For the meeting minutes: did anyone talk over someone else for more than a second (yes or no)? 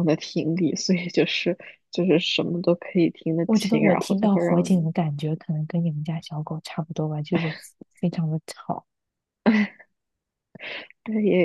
yes